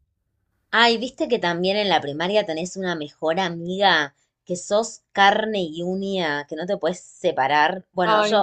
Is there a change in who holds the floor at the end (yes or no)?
no